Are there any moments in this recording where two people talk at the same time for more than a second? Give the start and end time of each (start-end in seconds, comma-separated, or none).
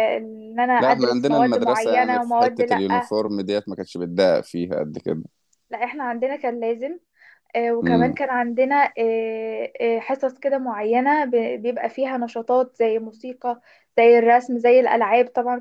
0.8-3.1